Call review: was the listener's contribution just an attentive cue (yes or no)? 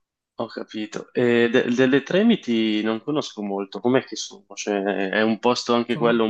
yes